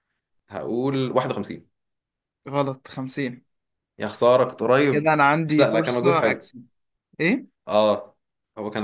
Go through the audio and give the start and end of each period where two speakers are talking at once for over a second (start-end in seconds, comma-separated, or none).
4.9-6.5